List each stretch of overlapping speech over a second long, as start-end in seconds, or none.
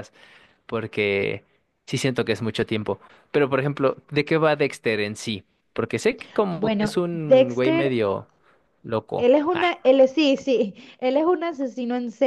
6.5-8.0